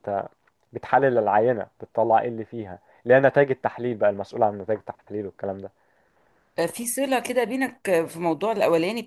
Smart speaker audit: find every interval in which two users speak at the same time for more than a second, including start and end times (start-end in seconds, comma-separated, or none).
none